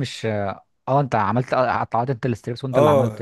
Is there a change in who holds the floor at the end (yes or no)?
yes